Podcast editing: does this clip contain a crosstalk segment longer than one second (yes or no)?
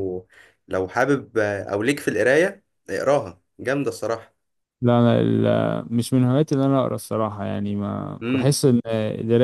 no